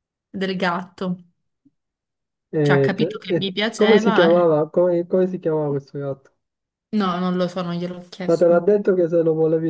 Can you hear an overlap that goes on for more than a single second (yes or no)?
yes